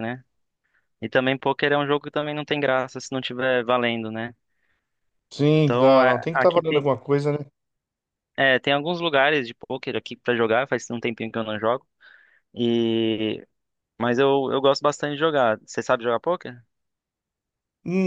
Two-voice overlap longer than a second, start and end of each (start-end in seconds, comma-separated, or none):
5.6-6.8